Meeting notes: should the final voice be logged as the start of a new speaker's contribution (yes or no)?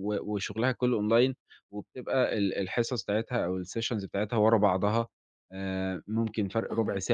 no